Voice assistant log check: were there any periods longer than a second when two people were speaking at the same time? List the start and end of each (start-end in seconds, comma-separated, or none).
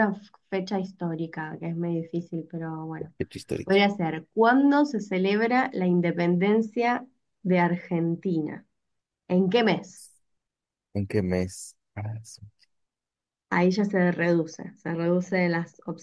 none